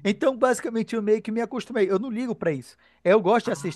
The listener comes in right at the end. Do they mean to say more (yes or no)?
no